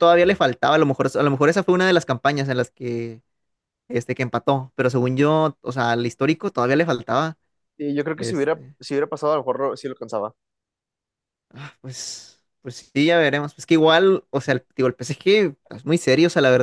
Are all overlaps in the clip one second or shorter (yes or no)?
yes